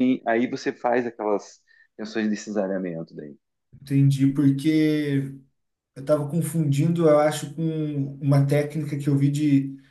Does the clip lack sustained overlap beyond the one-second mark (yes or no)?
yes